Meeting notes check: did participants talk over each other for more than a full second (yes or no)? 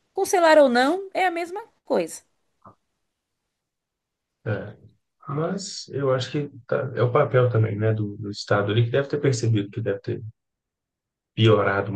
no